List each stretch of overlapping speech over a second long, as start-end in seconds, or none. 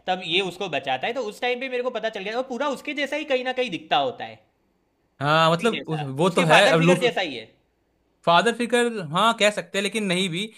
5.5-7.0